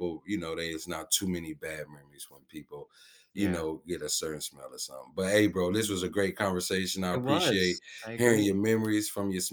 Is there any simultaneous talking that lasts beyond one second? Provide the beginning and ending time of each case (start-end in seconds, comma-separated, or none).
7.1-8.6